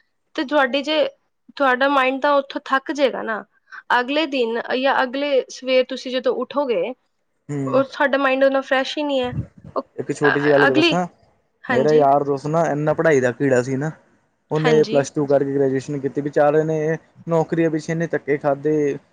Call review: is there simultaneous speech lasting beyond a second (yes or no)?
no